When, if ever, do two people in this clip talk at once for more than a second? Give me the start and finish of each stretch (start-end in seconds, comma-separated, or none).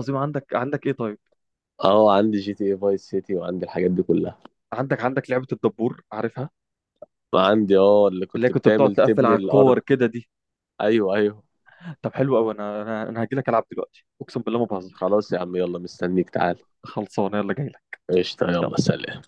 8.3-9.8